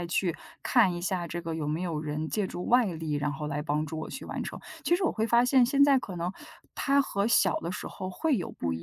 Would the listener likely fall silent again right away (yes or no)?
yes